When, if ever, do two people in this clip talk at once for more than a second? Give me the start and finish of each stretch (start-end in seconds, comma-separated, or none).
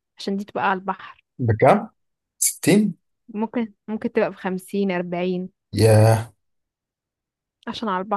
none